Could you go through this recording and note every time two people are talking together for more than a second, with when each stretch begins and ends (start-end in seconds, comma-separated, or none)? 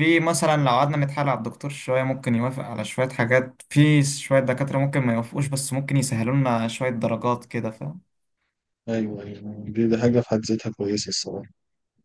none